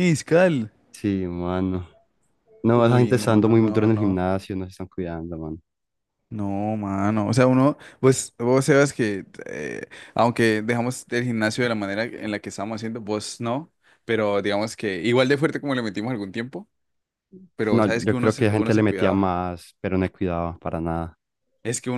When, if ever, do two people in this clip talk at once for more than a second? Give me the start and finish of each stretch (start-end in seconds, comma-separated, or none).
2.7-4.2, 17.7-19.3